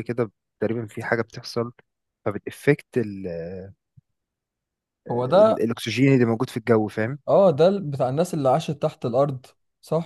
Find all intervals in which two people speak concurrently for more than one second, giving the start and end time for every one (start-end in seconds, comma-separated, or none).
none